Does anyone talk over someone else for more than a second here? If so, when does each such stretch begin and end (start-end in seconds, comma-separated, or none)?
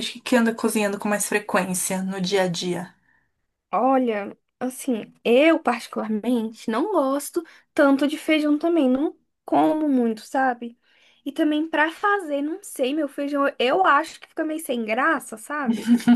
none